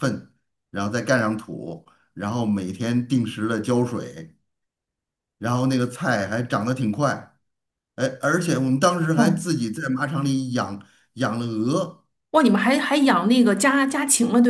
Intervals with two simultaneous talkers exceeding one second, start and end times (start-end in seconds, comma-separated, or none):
none